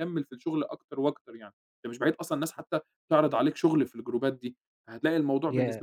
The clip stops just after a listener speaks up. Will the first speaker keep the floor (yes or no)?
yes